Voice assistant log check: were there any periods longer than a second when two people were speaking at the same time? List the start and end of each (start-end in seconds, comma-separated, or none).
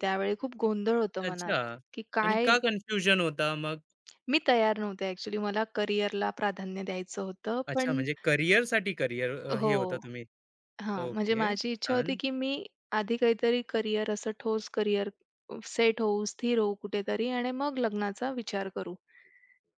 11.0-12.2